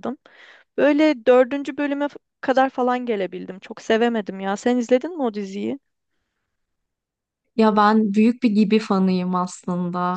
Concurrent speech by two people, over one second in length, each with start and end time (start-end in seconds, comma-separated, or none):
none